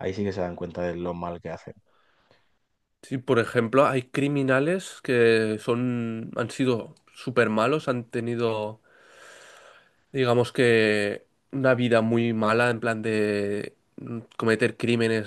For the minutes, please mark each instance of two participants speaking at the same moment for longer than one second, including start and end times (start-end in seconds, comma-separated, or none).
none